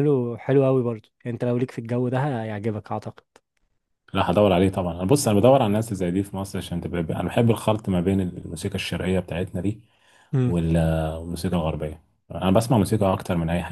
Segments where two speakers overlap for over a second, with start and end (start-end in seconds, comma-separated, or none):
none